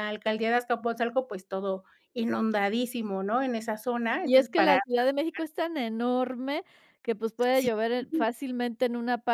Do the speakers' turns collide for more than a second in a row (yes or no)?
no